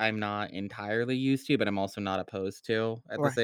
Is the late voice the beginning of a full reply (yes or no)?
yes